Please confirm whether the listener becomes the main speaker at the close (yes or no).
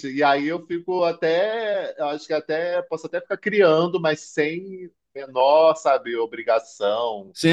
yes